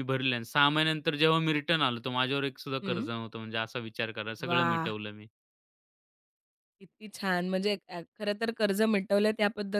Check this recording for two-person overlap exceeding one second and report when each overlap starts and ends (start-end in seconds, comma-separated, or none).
none